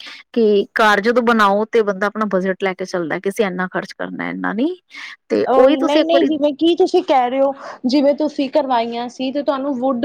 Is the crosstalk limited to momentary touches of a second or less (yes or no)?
yes